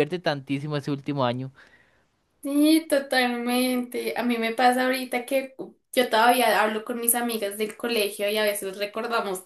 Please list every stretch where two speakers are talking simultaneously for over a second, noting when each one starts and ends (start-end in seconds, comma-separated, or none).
none